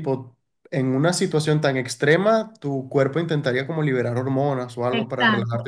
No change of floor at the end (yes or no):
no